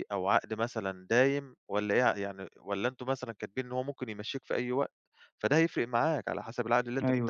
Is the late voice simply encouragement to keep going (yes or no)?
no